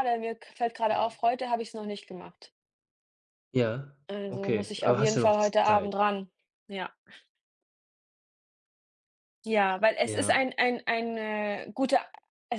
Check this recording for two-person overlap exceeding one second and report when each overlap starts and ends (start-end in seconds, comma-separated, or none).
4.1-5.9